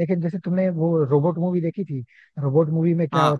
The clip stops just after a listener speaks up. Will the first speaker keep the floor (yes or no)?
yes